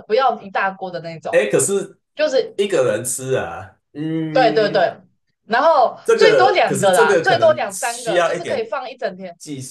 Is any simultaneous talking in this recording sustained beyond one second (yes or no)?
yes